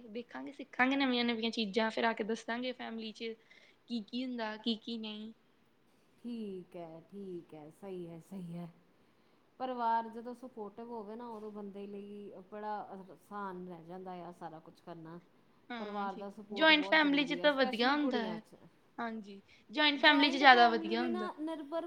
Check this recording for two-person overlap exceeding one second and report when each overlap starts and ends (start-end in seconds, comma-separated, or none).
15.8-18.4, 20.1-21.3